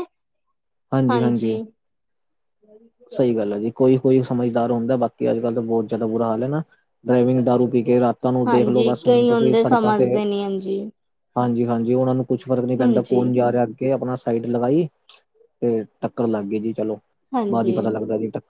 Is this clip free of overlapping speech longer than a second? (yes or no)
no